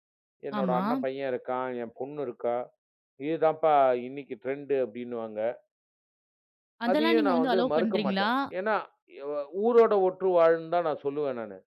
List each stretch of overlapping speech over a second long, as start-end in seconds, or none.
6.9-8.3